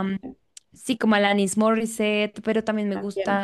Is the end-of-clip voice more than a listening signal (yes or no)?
no